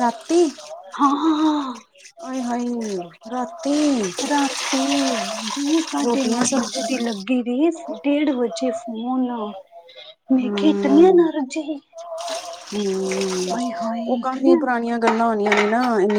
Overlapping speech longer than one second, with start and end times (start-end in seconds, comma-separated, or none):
none